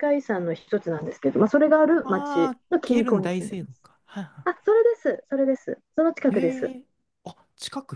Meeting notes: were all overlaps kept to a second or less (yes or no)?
no